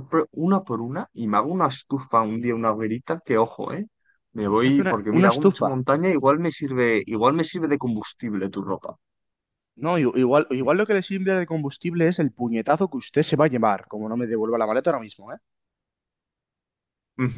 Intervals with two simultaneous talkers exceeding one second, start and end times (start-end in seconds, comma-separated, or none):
4.5-5.8